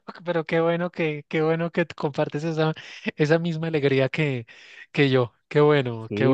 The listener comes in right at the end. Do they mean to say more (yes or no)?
yes